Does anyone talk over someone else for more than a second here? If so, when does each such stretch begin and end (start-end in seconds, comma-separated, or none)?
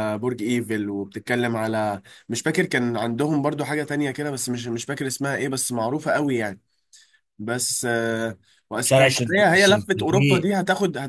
8.8-10.5